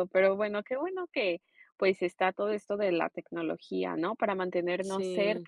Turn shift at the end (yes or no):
no